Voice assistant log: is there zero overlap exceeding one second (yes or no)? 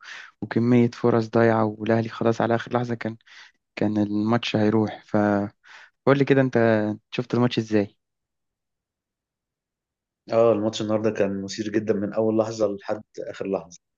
yes